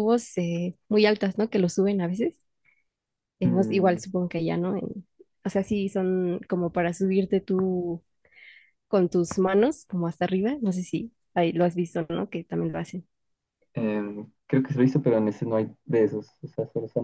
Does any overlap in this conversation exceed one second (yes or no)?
no